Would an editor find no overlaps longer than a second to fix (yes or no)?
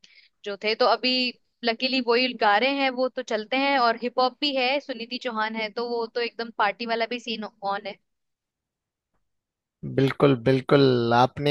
yes